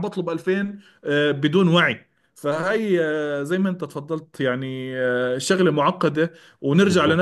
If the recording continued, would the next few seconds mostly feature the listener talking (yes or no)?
no